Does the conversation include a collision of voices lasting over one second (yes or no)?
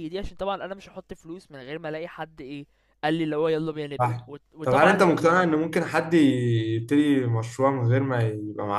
yes